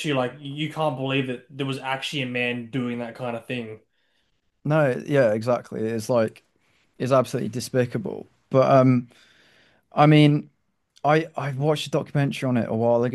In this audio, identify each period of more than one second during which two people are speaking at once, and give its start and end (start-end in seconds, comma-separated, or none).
none